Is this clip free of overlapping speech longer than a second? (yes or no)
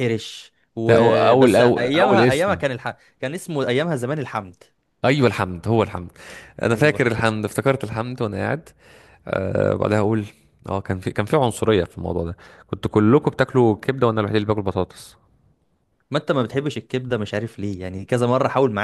no